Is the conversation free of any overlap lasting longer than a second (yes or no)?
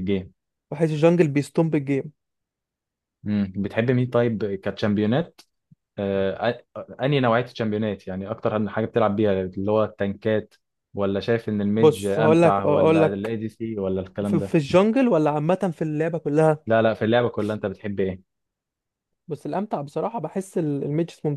no